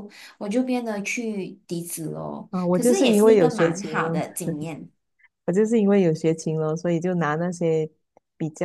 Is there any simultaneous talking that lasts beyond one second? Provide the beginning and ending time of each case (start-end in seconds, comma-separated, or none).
2.5-4.2